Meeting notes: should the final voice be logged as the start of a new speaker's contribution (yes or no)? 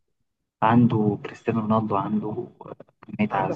yes